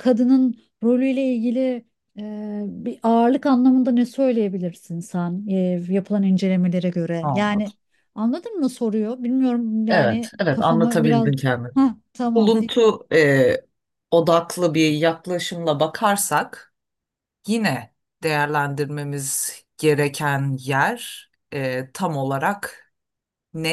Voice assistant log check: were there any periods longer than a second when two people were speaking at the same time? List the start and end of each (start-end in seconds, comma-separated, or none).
9.9-11.3